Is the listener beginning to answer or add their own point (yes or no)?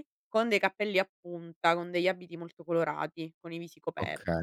yes